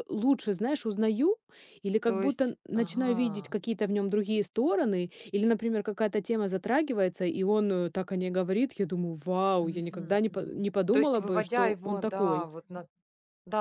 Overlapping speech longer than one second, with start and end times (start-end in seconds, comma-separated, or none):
2.0-3.5, 9.6-12.5